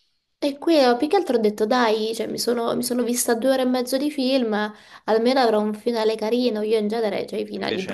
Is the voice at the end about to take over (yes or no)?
no